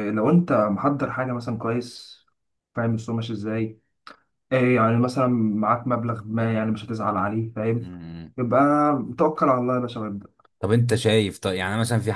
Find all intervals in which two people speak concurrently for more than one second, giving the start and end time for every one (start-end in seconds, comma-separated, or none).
none